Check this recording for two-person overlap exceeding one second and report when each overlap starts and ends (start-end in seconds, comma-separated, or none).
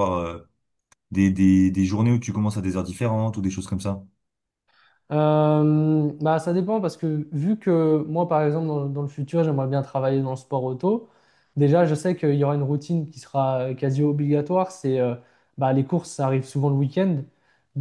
none